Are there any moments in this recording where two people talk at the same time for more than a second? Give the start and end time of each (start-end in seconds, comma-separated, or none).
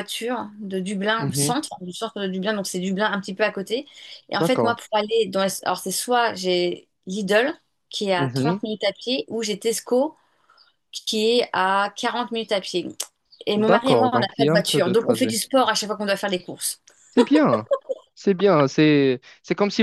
13.6-15.4